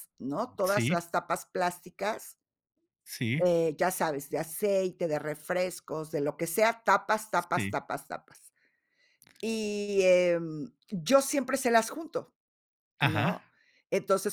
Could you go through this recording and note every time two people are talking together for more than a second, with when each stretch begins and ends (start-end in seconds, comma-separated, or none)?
none